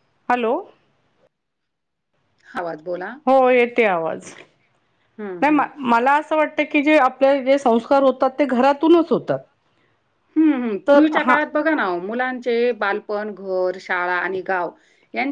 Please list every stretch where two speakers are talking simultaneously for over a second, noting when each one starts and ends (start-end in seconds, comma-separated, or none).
none